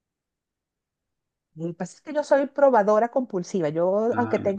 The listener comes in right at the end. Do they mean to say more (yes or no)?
no